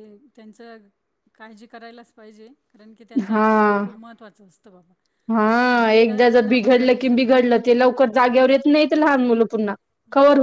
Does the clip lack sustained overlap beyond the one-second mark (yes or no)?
no